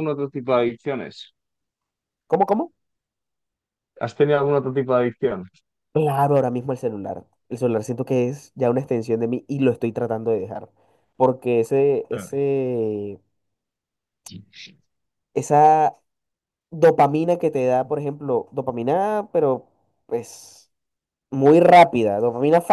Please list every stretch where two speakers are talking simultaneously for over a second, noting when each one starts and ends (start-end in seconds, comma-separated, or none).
none